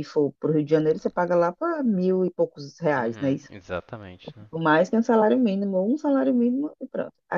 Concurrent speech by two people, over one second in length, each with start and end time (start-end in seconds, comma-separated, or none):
none